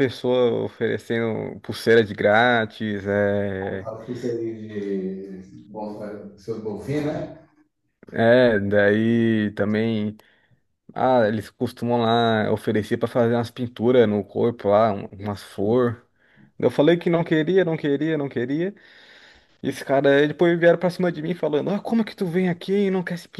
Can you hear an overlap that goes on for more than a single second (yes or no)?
no